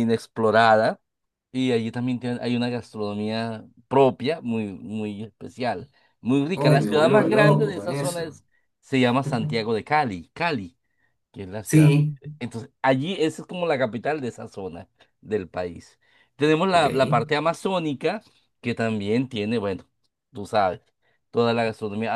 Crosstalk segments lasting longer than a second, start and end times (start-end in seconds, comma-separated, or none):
6.5-8.4